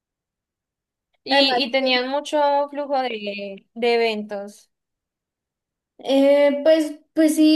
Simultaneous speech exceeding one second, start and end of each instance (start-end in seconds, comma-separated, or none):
none